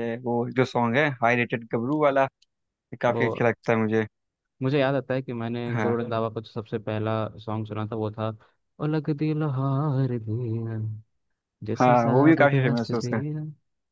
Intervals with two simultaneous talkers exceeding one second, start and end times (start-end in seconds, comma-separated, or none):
11.8-13.2